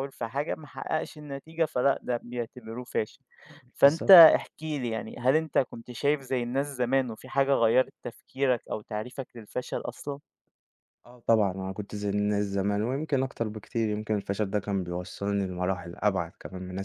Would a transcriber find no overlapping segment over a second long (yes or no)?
yes